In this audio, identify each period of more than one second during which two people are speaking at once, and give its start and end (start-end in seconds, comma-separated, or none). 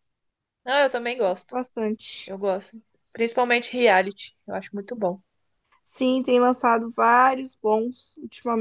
none